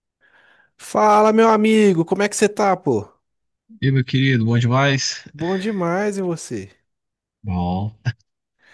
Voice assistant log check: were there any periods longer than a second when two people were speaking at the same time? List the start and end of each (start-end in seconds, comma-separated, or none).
none